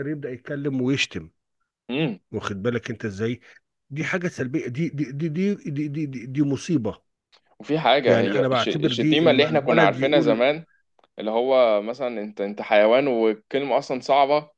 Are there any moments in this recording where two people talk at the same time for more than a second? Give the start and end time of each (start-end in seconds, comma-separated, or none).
8.1-10.4